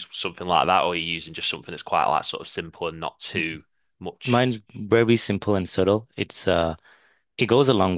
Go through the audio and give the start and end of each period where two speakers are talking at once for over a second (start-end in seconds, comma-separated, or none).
none